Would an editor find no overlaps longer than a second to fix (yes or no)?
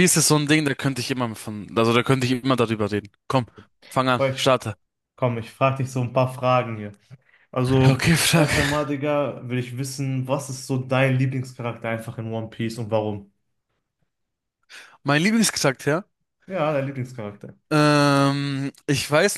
yes